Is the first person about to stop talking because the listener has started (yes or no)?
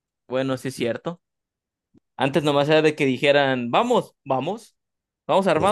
no